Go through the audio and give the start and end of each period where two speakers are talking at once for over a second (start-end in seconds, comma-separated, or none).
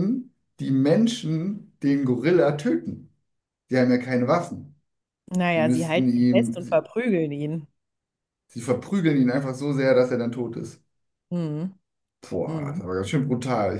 5.5-6.9